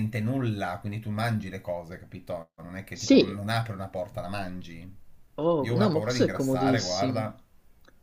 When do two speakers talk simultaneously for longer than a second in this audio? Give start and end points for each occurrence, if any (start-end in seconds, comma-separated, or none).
5.6-7.3